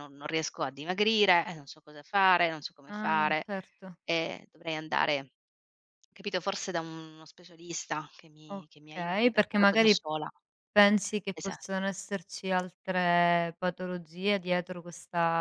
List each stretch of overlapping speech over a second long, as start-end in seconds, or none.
8.5-10.0